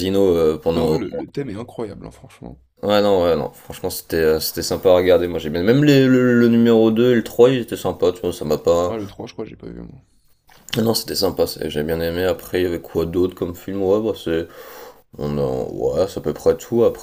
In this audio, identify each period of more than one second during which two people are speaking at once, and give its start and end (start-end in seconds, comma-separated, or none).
none